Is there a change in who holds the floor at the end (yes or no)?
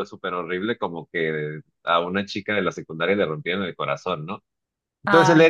no